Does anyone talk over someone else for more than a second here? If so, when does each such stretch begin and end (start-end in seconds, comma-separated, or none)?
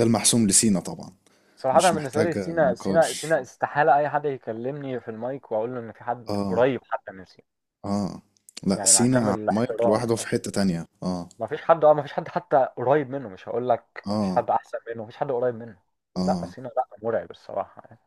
1.7-3.4, 8.7-10.3